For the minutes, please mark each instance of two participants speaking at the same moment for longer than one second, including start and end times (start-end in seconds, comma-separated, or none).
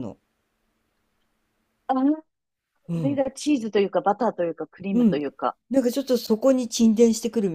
none